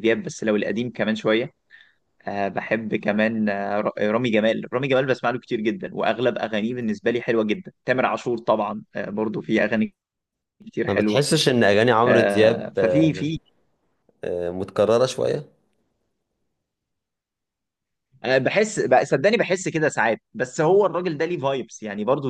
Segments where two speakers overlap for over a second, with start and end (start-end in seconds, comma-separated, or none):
12.1-13.3